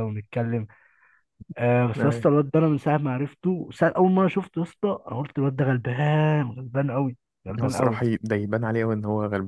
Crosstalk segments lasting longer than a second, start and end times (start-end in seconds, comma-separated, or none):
none